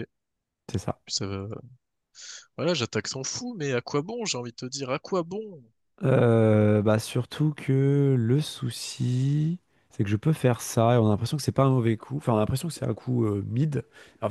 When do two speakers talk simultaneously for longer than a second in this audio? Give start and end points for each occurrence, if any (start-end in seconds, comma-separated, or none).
none